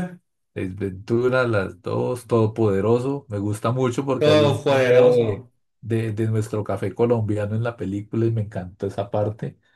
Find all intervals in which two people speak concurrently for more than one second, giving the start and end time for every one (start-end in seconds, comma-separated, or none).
4.2-5.5